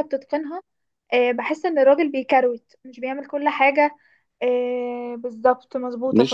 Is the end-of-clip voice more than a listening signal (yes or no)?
no